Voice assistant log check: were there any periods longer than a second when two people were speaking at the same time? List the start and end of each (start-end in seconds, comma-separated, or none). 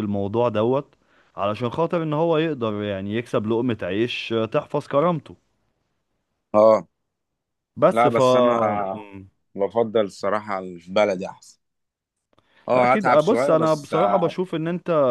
12.7-14.3